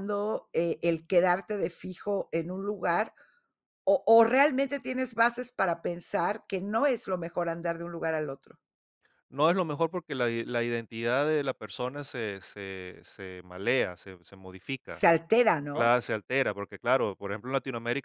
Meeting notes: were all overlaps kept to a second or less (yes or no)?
yes